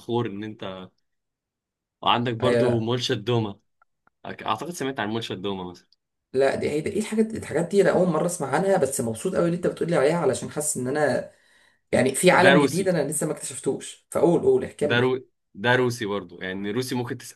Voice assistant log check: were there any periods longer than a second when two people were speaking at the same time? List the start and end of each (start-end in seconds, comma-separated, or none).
none